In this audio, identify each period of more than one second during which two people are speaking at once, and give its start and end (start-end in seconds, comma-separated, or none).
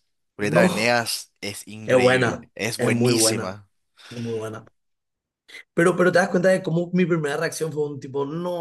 1.8-3.6